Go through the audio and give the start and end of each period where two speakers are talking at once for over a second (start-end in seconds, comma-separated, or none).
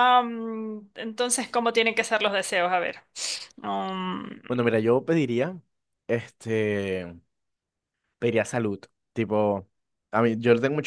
none